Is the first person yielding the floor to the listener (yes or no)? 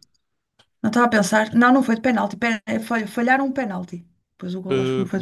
yes